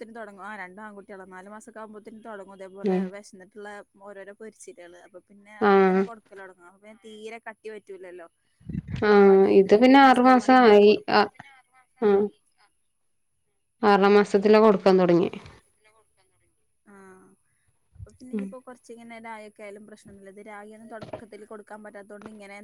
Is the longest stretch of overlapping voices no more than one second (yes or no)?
no